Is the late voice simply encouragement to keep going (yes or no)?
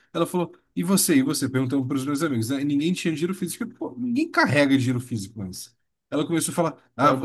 yes